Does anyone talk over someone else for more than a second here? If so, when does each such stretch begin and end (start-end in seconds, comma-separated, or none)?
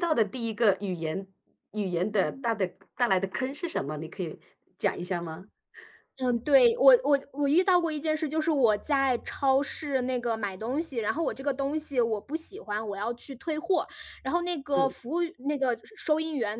none